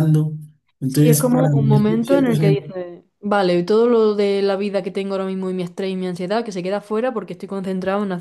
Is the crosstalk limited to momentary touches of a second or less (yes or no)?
no